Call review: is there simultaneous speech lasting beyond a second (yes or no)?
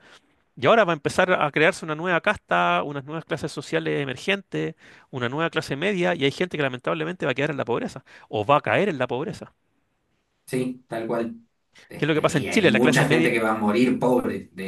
yes